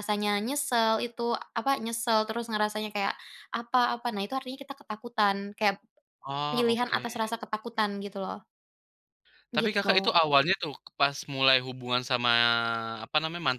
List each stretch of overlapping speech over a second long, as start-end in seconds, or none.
none